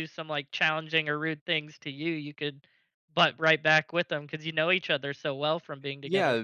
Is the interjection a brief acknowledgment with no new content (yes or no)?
no